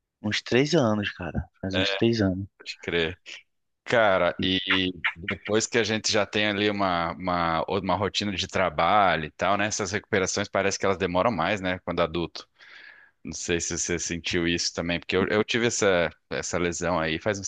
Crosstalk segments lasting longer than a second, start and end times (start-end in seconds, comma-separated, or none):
none